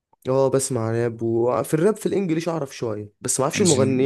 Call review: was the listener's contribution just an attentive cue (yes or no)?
yes